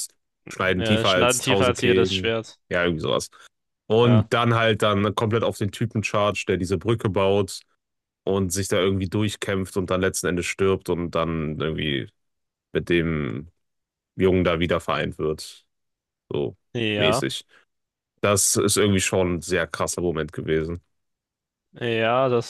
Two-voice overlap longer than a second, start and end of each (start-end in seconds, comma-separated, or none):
0.8-2.3